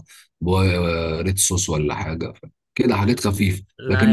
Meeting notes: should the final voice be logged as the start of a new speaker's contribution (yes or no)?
no